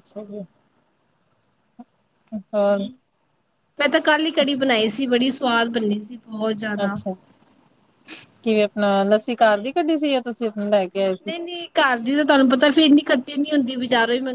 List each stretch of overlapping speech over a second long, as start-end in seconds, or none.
none